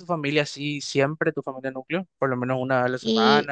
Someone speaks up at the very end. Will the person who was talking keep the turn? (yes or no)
no